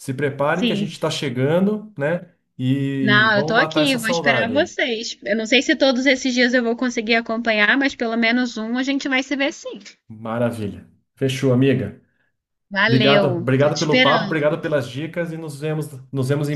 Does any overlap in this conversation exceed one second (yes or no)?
yes